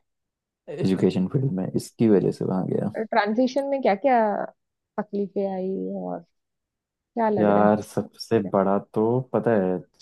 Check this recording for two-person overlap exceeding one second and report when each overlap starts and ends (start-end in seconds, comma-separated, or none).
none